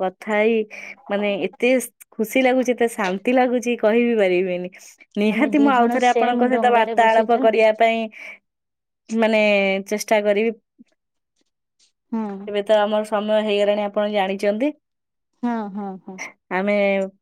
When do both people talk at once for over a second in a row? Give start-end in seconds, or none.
5.3-7.5